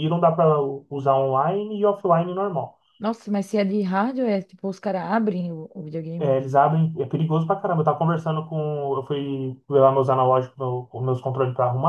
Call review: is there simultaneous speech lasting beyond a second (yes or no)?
no